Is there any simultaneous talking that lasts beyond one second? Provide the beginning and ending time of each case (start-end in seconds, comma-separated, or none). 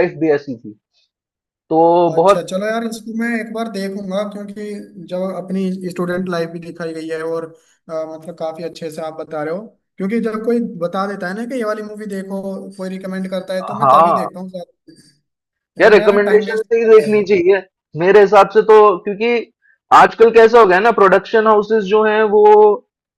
15.8-17.2